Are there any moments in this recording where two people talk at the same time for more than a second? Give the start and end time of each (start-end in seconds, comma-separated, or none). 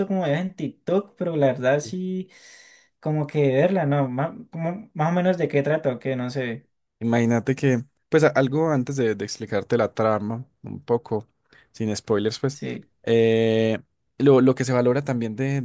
none